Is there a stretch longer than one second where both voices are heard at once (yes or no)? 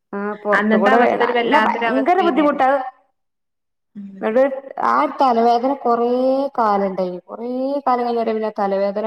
yes